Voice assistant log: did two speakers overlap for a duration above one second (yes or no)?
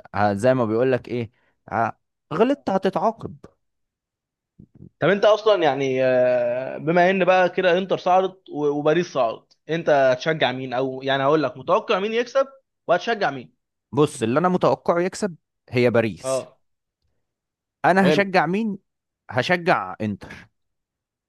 no